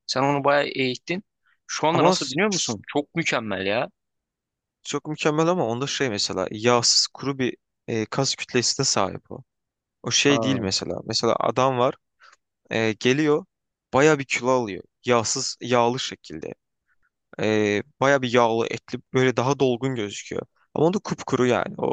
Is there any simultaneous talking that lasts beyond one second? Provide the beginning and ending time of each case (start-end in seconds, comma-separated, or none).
none